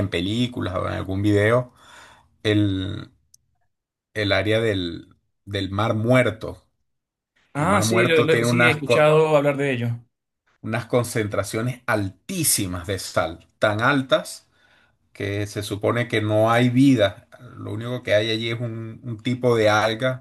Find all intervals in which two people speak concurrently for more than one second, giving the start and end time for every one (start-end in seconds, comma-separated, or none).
7.6-9.1